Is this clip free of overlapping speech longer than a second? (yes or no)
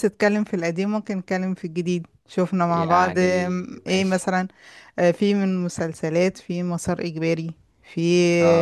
no